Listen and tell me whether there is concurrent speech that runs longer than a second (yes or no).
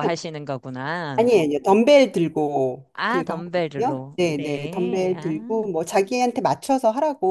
yes